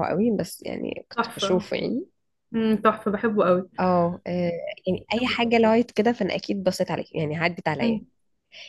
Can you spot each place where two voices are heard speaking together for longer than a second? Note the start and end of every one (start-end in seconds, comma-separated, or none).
none